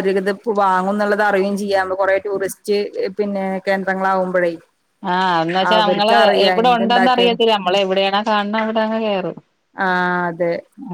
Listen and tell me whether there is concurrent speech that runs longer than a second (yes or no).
yes